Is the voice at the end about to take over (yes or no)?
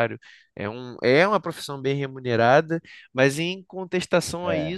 no